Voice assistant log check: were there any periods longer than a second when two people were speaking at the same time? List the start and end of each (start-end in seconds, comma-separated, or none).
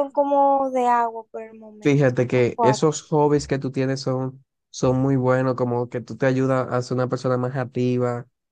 1.8-3.1